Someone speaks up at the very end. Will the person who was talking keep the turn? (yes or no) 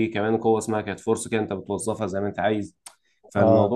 yes